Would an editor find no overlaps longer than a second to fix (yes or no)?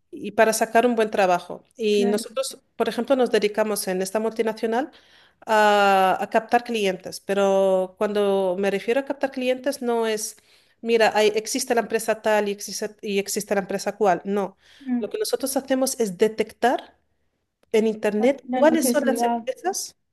no